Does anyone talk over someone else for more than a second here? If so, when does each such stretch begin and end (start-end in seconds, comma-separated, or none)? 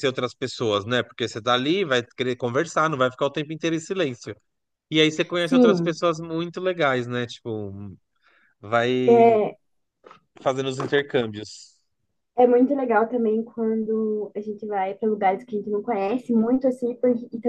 none